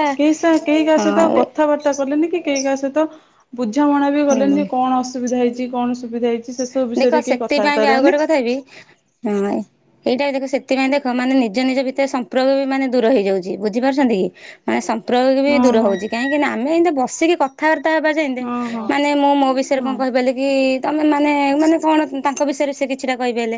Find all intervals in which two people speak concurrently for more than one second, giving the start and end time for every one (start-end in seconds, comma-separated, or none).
none